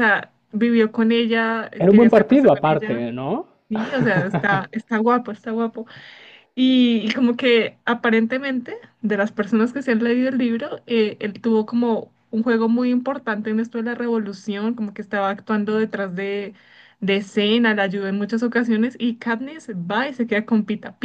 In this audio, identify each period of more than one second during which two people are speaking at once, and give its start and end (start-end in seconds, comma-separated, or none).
1.8-3.0